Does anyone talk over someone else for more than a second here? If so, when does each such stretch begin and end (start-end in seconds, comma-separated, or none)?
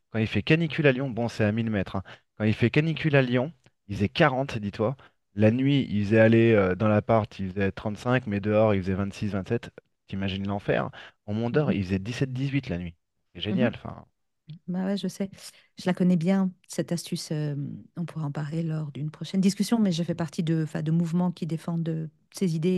none